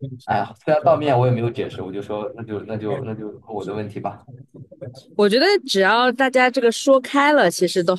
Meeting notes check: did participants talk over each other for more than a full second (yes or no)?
no